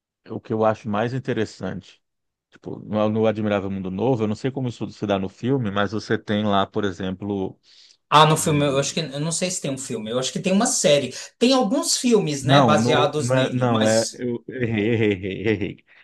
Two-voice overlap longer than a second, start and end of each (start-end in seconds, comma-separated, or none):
12.4-14.2